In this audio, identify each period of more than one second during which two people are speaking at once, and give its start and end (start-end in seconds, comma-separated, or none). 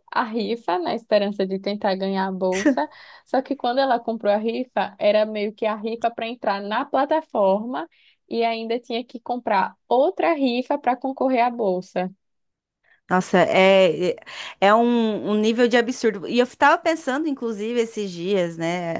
none